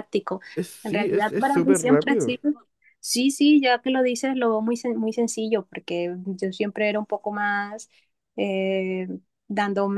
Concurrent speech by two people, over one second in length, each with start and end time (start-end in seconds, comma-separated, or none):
0.8-2.3